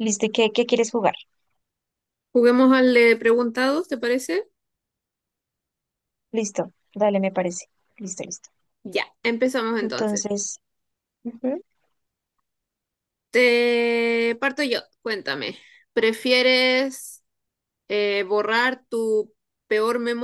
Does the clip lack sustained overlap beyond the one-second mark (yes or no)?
yes